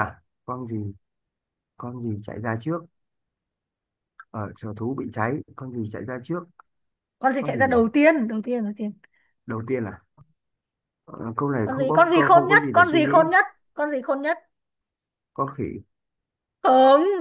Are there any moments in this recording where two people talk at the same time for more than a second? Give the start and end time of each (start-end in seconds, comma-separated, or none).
11.6-13.1